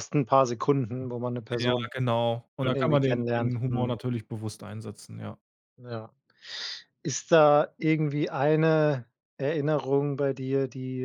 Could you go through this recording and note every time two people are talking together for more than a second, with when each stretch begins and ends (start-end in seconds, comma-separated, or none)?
2.6-4.0